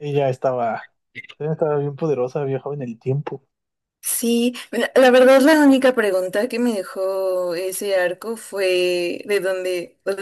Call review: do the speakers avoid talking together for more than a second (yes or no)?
yes